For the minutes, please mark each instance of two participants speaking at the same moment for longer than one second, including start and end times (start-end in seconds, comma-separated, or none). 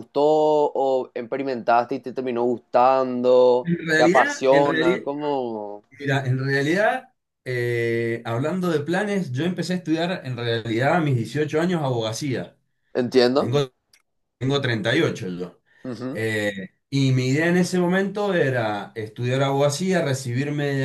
3.6-5.0